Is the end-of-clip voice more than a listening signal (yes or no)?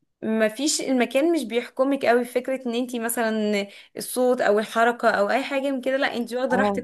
yes